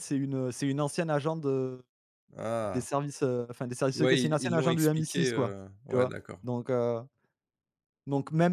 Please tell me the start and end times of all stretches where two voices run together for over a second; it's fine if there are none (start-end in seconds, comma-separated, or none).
3.9-6.4